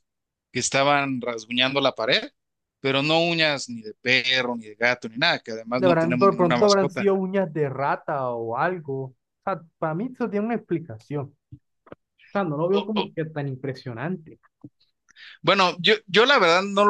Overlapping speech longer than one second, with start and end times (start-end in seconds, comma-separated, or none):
5.8-7.1